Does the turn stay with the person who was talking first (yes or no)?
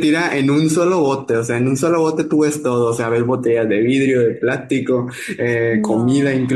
yes